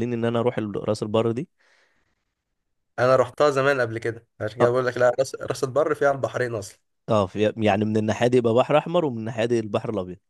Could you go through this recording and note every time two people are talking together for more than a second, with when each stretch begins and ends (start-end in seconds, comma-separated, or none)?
none